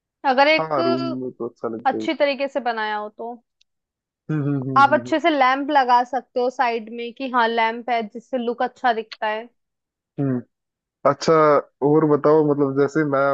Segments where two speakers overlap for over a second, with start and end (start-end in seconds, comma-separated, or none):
none